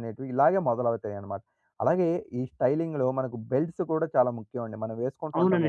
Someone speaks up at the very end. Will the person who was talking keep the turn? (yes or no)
no